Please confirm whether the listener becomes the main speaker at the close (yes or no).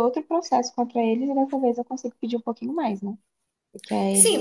yes